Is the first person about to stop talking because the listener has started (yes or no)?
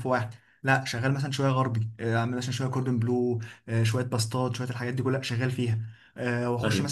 no